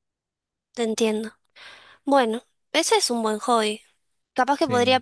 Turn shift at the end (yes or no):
no